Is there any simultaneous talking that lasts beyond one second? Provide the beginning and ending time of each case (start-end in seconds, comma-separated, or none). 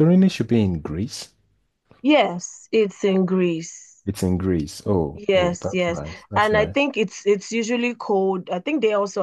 5.1-6.8